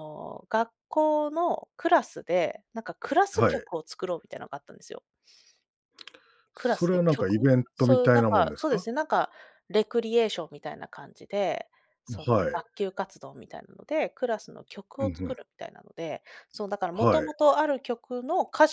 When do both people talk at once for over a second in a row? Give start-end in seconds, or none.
6.6-8.9